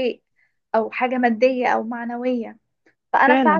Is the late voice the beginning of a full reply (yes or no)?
no